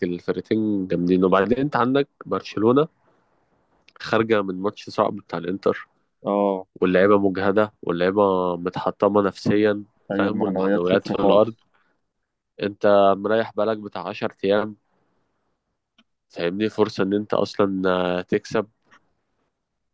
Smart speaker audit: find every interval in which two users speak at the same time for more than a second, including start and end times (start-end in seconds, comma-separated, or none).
10.1-11.5